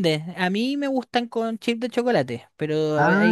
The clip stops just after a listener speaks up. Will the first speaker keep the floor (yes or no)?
yes